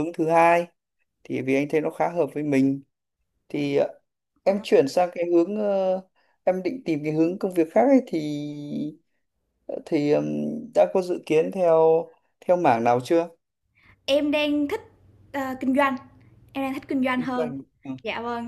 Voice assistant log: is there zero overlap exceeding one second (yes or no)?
yes